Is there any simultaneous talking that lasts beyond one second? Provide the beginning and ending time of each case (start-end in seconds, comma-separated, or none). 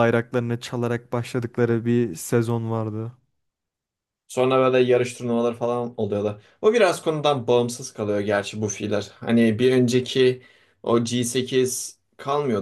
none